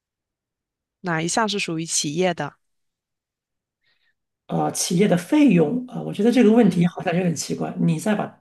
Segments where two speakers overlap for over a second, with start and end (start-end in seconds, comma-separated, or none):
none